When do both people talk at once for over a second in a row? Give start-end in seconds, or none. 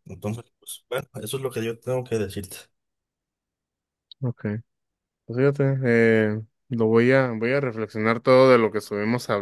none